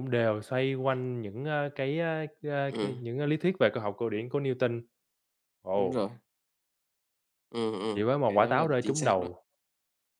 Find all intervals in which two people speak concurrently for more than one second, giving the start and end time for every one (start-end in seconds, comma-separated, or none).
7.9-9.3